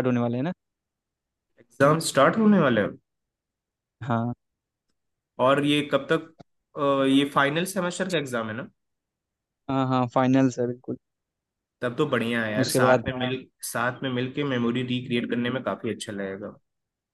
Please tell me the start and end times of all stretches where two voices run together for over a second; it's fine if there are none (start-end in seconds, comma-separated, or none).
none